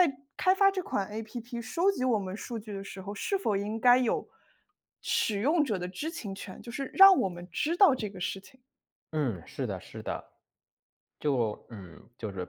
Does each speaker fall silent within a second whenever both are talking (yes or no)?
yes